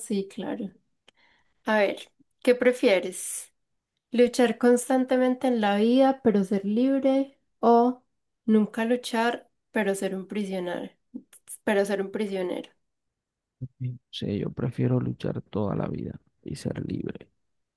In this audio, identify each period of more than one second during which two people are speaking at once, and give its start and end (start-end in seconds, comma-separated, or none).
none